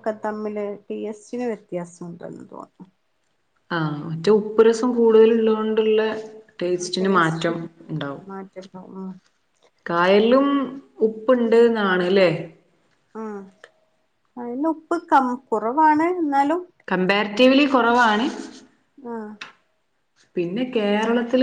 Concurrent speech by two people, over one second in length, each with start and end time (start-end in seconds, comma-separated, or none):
none